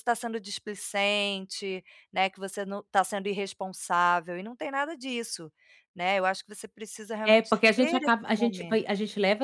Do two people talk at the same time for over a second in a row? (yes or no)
yes